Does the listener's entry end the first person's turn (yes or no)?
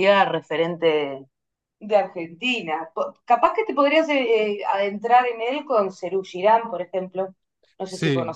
yes